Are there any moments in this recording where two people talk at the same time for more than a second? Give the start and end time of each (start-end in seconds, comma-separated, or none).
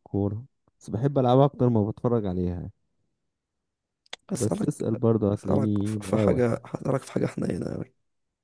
5.3-6.6